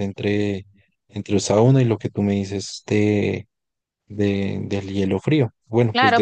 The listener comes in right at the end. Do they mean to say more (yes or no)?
yes